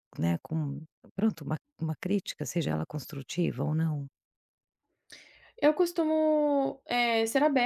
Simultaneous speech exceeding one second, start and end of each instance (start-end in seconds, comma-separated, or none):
none